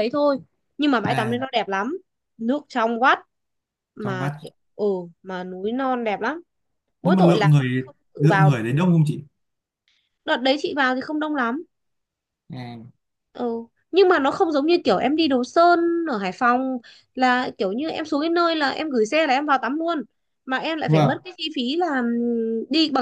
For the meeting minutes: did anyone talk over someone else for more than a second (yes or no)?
yes